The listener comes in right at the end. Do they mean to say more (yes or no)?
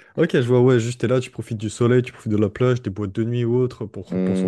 yes